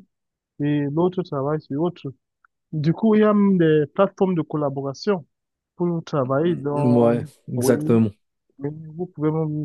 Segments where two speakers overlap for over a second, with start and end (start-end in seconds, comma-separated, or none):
6.4-8.0